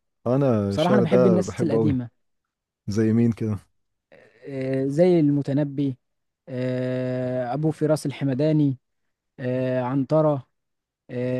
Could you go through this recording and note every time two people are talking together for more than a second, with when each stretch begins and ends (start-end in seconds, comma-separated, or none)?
0.7-2.0